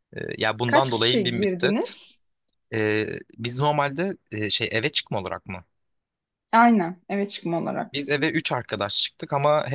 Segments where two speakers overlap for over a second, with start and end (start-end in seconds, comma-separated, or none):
0.7-2.0